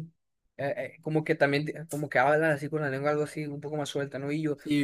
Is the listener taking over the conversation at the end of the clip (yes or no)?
yes